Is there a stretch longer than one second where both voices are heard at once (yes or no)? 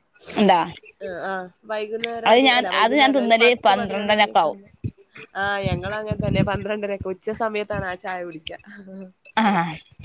yes